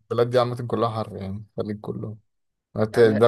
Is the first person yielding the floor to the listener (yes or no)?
no